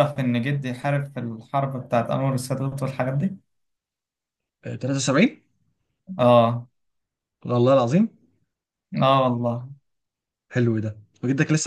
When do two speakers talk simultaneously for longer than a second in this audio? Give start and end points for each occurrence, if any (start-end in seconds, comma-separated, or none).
none